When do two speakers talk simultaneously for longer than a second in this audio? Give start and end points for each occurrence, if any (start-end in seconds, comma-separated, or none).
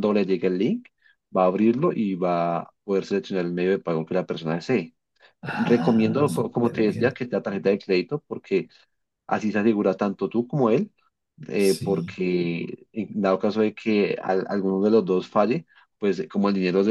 5.5-7.1